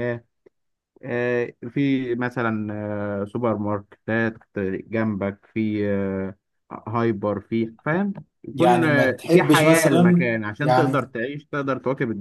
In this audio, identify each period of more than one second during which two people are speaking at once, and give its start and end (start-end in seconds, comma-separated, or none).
8.5-11.1